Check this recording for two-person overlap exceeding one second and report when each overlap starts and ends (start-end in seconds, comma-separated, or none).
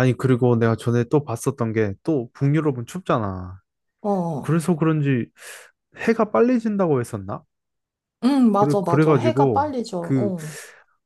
8.5-10.3